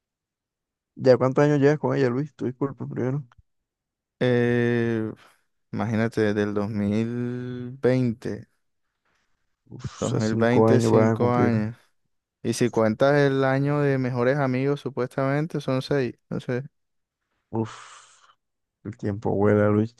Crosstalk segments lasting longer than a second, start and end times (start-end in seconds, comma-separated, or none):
10.0-11.6